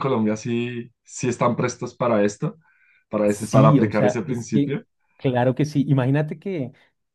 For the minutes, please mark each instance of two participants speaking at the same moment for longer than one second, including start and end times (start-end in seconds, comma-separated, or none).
3.2-4.7